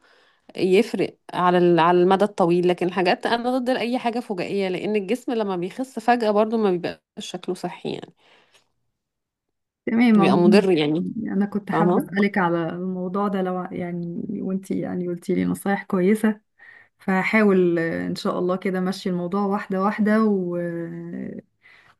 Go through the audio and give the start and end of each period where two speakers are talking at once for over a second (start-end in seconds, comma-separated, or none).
none